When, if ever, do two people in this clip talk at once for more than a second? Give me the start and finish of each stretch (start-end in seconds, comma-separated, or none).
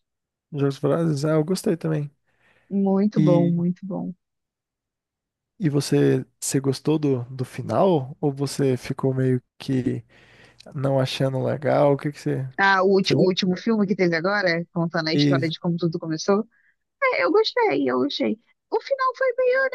none